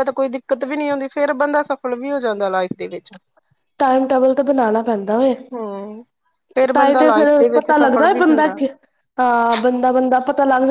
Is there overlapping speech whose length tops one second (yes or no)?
yes